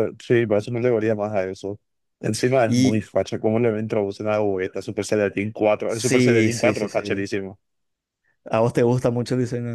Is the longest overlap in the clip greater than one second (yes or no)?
yes